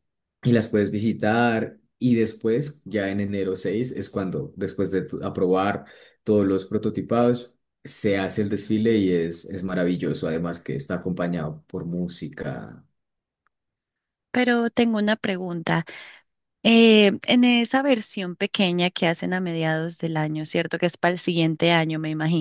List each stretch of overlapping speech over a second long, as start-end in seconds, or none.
none